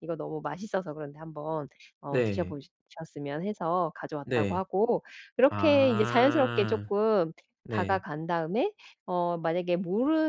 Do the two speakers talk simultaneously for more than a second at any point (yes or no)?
yes